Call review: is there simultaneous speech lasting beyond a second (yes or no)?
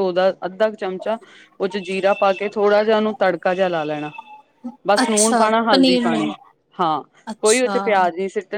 yes